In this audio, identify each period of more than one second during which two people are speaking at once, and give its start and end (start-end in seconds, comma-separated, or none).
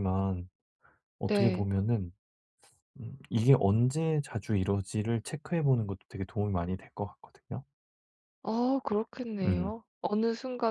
none